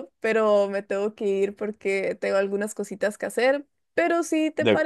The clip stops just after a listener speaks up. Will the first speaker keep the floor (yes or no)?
yes